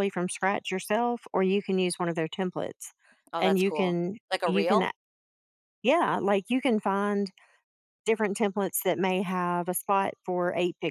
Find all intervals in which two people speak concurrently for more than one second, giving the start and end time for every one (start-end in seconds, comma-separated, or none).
3.4-4.9